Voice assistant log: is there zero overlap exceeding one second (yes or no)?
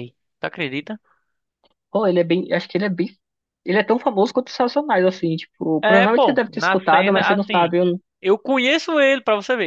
no